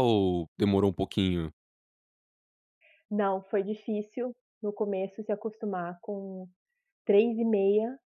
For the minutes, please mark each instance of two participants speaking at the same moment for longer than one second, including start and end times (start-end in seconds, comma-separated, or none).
none